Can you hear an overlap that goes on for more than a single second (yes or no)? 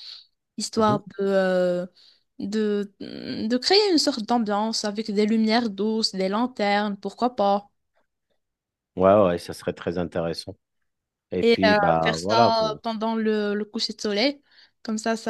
yes